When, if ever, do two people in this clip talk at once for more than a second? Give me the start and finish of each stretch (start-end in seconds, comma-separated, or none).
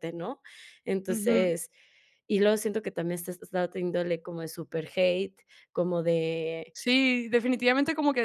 none